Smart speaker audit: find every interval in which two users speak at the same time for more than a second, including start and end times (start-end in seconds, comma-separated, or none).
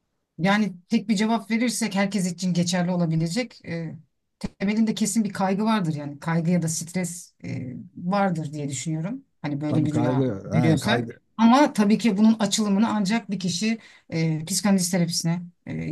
9.7-11.2